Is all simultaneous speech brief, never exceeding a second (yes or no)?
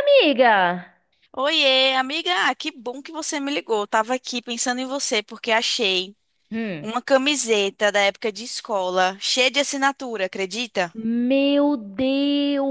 yes